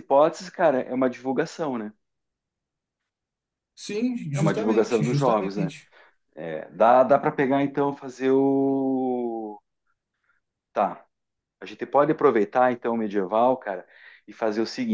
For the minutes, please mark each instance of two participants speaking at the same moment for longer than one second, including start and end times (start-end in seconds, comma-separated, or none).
4.3-5.7